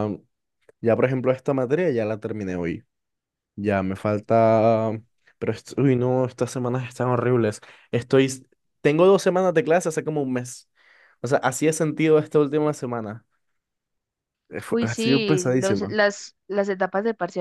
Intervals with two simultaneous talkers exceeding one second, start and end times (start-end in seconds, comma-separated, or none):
14.7-15.9